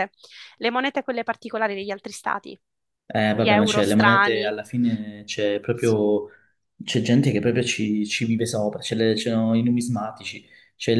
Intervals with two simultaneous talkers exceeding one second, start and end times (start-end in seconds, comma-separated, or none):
3.3-4.5